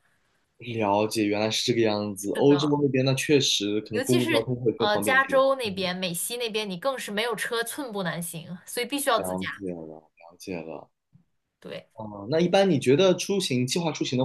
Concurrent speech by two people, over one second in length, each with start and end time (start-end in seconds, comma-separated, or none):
3.9-5.9